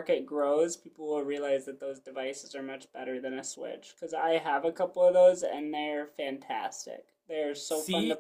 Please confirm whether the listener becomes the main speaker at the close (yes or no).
no